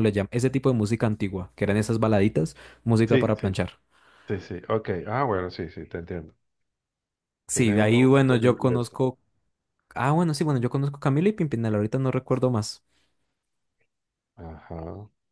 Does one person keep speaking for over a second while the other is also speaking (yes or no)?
yes